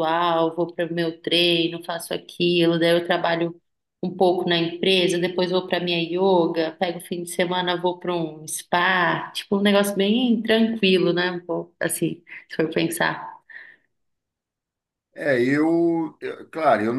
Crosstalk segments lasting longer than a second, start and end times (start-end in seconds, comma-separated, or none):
none